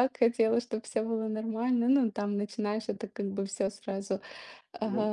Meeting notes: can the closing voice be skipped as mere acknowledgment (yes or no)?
no